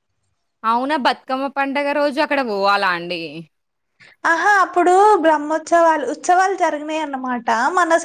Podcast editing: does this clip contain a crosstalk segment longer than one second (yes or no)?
no